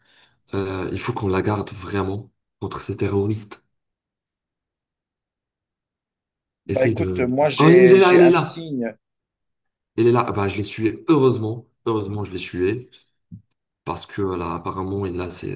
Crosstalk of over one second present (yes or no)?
yes